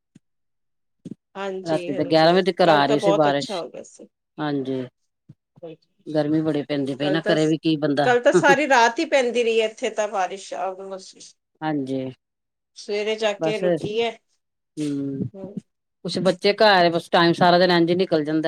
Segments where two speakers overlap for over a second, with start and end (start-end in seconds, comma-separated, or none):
1.7-3.6